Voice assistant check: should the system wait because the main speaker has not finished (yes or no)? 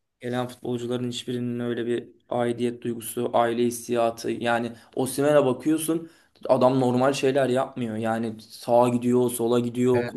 no